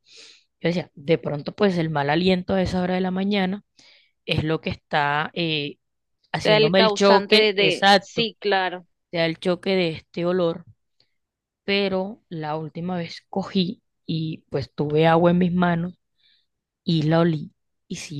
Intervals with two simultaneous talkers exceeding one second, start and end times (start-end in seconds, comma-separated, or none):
6.4-8.3